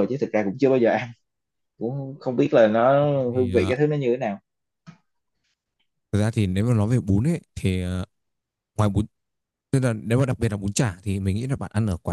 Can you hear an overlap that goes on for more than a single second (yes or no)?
no